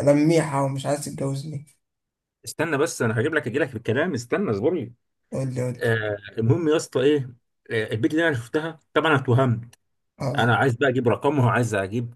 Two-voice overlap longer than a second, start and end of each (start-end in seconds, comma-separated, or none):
none